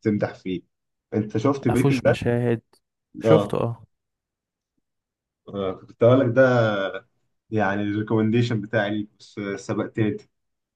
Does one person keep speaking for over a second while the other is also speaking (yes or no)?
no